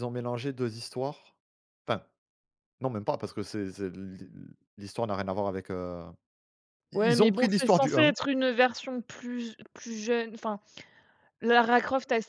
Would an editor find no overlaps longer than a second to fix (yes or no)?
no